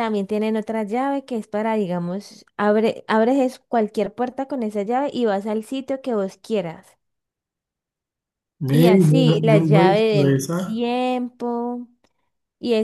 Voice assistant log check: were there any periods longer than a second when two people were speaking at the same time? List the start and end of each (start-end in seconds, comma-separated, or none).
8.7-10.8